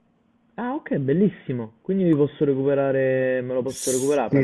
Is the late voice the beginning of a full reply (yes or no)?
yes